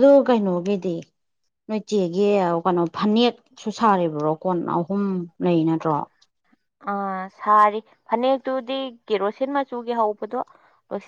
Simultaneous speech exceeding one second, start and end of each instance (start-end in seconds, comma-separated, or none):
none